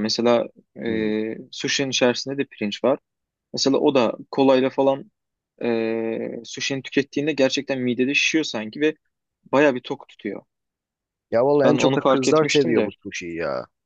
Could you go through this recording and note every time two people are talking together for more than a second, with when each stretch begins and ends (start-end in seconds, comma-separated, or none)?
11.6-12.9